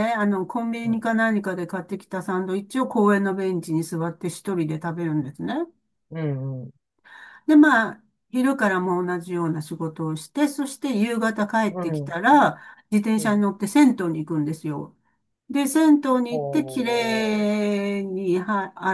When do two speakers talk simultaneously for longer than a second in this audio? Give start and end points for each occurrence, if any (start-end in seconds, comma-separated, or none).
16.3-17.5